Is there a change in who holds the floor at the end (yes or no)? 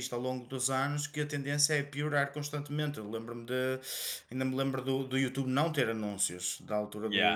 no